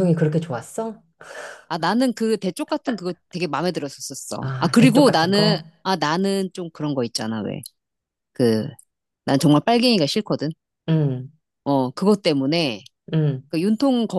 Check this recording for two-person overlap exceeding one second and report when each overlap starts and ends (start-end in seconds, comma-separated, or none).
4.4-5.6